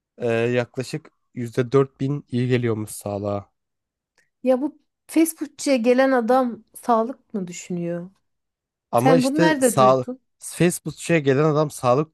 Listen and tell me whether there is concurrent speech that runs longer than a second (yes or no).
yes